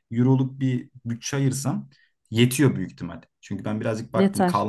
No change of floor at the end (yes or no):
yes